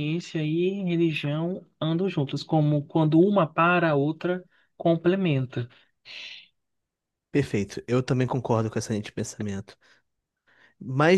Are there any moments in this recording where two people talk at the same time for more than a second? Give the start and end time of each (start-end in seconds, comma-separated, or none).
none